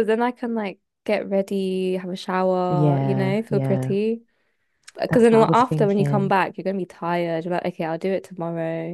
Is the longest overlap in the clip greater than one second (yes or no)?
yes